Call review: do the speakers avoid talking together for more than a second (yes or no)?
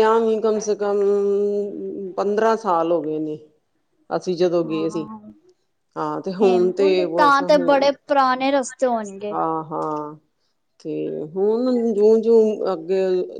no